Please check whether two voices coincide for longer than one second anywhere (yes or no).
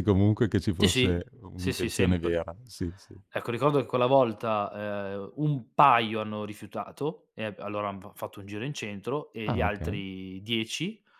yes